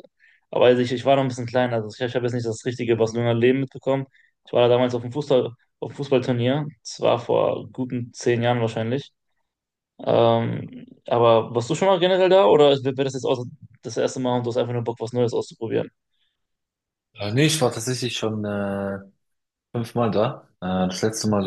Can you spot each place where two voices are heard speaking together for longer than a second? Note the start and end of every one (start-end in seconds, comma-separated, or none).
none